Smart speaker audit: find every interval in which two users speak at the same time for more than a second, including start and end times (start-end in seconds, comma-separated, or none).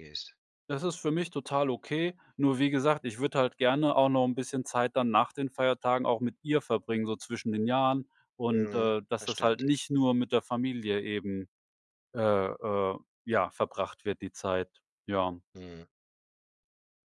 8.5-9.8